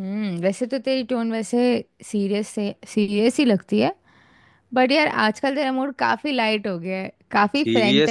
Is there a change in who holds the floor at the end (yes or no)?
yes